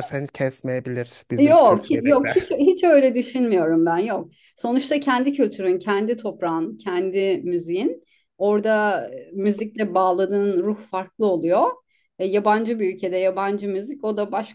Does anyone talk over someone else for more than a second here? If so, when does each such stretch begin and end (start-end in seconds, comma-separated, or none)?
1.4-2.6